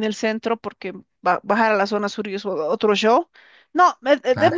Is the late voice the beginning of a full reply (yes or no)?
no